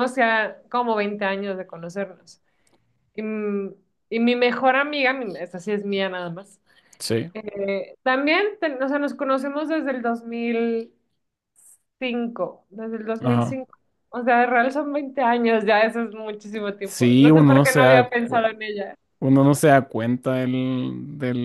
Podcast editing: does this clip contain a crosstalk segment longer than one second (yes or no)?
yes